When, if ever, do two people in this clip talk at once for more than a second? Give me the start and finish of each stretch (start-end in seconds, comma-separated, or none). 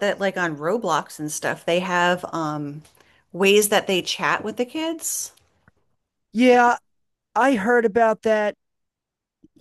none